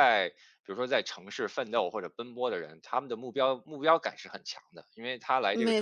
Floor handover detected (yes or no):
no